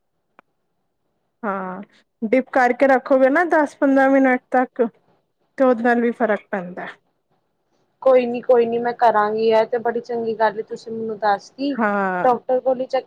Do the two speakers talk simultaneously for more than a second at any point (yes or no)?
no